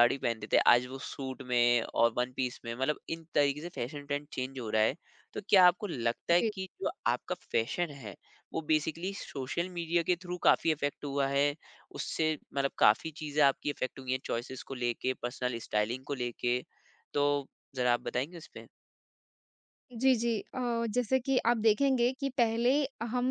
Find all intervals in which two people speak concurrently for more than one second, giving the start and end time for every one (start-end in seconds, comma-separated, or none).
none